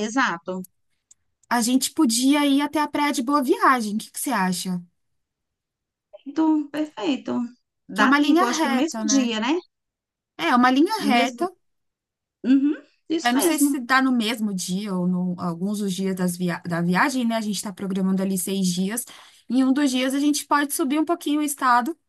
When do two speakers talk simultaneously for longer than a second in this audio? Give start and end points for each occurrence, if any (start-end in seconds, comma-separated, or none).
7.9-9.3